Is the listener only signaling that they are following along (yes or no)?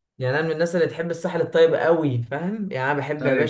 yes